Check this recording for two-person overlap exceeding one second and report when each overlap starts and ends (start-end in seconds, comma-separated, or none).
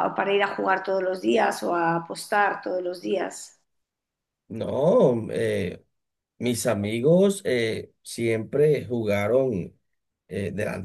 none